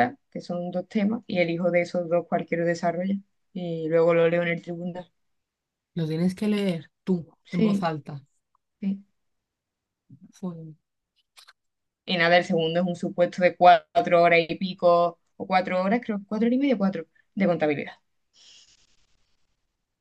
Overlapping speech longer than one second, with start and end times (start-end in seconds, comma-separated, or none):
none